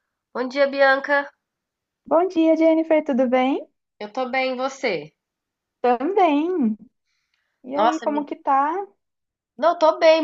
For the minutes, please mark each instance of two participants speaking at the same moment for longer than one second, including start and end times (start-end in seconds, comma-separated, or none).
none